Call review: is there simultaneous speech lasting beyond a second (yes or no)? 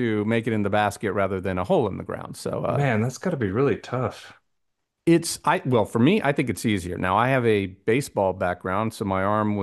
no